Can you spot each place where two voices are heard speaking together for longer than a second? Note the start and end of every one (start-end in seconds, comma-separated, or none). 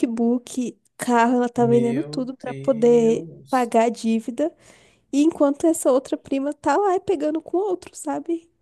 1.6-3.7